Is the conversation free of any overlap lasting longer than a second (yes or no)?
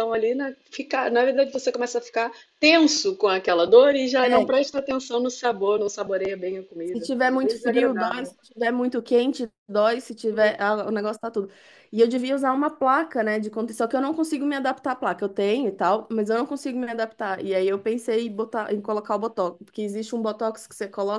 no